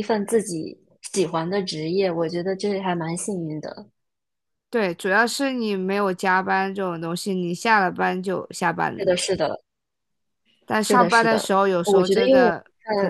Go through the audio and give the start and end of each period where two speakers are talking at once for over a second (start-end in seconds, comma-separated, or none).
10.8-12.5